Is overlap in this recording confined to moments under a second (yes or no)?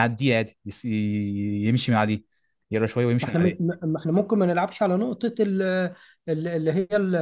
yes